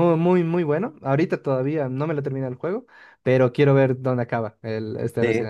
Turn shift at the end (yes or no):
yes